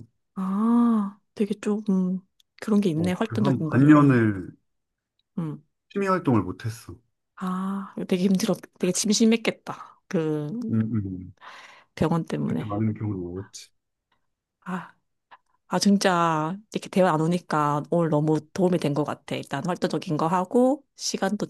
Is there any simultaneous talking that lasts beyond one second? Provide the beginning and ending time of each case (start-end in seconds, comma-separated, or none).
2.9-4.2